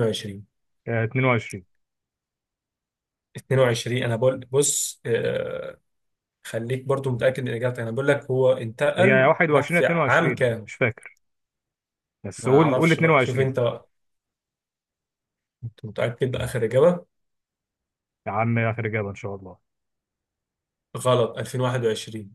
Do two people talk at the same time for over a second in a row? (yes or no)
yes